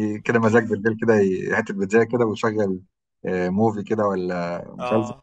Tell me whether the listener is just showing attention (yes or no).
yes